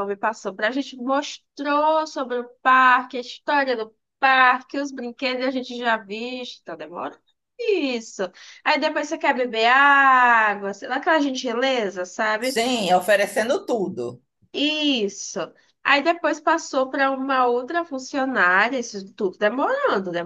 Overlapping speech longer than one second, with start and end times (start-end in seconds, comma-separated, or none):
none